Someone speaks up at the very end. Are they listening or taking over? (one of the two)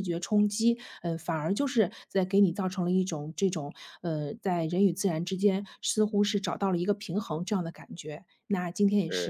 listening